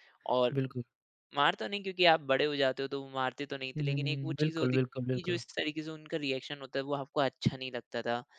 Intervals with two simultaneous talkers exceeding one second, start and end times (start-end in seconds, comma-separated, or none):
3.8-5.4